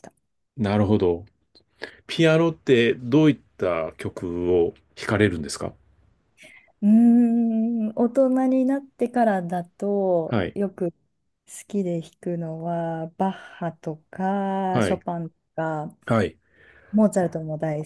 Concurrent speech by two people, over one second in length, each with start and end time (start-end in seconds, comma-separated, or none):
none